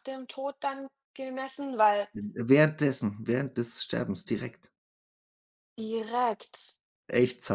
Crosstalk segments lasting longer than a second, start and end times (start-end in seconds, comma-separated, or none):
none